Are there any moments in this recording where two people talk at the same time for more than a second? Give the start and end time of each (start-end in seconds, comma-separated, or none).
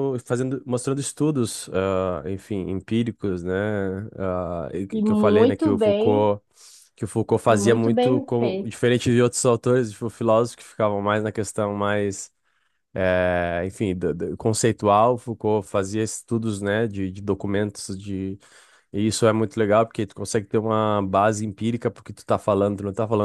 4.9-6.3, 7.5-8.7